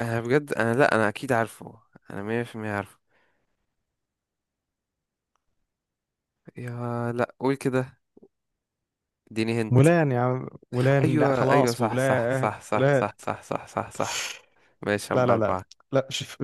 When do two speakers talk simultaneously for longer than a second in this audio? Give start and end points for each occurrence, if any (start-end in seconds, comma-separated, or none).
11.0-13.1